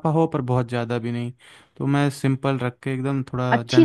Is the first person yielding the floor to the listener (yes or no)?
yes